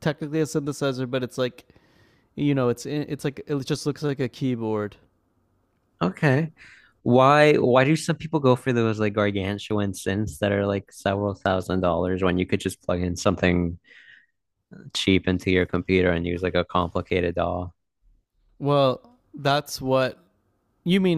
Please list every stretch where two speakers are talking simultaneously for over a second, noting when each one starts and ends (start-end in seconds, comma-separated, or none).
none